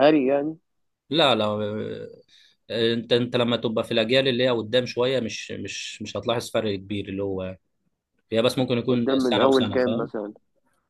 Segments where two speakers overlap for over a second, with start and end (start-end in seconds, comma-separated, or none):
8.9-10.1